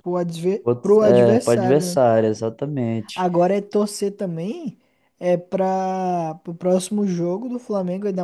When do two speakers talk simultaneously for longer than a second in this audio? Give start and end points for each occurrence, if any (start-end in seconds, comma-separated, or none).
0.6-2.0